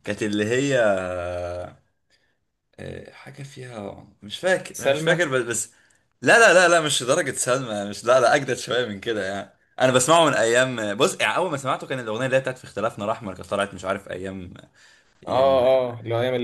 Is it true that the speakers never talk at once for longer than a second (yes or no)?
yes